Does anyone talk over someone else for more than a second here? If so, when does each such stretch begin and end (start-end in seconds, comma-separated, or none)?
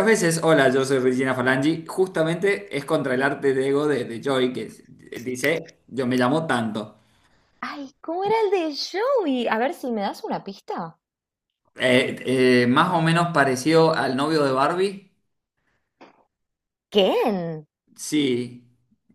none